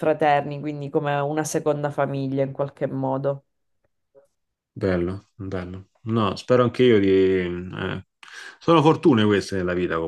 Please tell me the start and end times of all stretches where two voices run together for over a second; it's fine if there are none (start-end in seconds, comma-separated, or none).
none